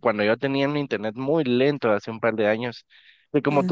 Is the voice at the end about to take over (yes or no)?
no